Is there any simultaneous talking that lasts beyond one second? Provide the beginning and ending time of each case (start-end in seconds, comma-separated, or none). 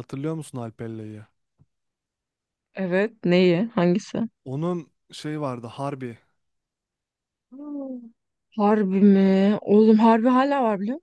none